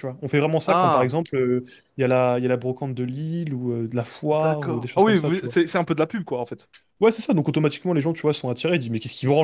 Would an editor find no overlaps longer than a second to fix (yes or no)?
no